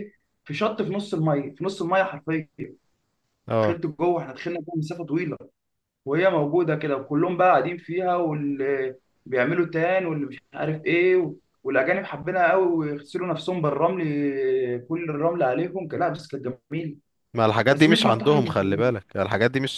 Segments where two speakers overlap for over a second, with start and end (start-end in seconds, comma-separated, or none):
17.7-18.9